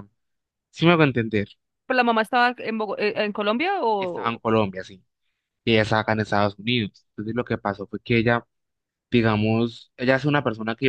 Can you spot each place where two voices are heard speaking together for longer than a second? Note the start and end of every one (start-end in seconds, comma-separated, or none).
none